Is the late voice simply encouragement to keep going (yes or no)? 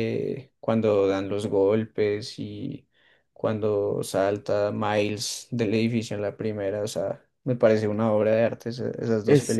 no